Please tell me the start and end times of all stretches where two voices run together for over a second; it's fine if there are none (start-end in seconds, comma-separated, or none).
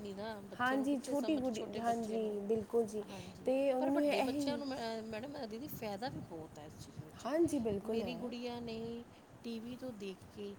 0.6-2.3, 3.1-4.6